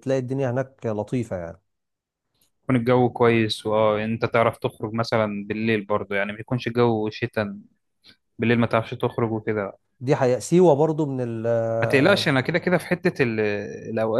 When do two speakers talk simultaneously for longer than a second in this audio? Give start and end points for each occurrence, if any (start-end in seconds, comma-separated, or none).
none